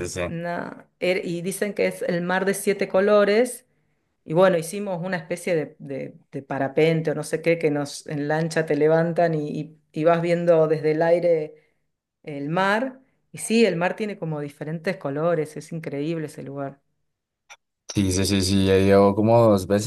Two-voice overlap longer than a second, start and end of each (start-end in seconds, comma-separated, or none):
none